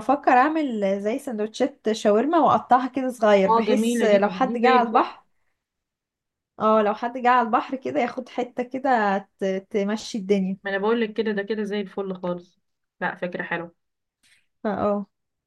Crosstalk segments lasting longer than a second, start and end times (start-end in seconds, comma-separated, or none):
3.5-5.1